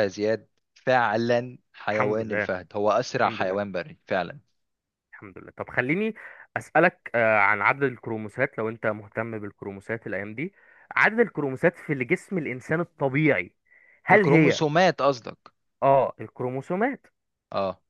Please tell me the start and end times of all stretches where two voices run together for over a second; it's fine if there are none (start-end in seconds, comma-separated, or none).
none